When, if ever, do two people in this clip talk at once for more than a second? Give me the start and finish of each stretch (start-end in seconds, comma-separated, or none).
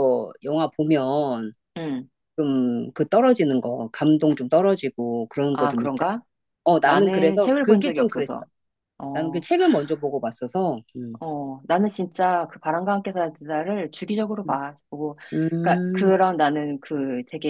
6.8-8.4